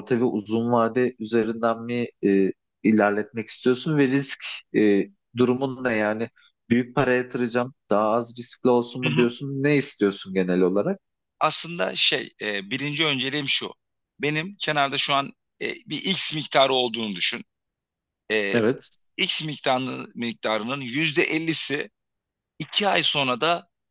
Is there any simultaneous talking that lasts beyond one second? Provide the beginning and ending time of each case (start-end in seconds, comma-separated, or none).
none